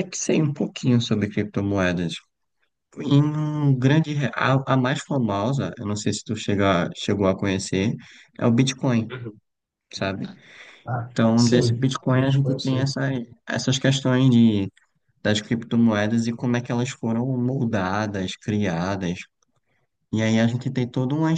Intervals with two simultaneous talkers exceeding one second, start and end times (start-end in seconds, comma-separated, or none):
11.1-12.9